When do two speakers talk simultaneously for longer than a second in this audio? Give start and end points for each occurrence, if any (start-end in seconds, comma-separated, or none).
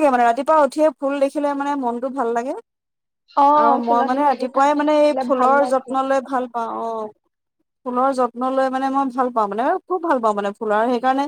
3.6-5.9